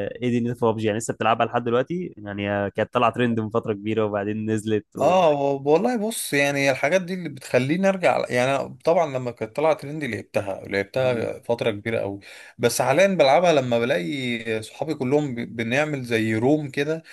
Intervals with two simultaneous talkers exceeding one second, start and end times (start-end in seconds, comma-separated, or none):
none